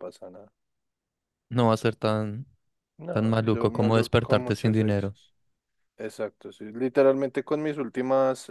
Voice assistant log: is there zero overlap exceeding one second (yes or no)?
no